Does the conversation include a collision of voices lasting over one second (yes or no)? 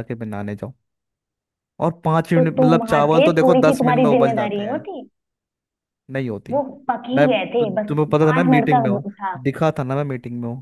yes